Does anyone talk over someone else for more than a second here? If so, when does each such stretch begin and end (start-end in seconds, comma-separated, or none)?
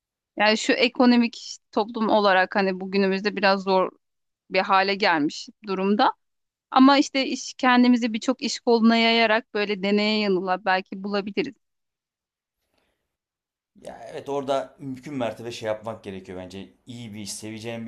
none